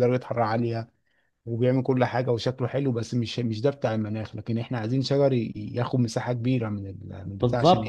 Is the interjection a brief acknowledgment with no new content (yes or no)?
no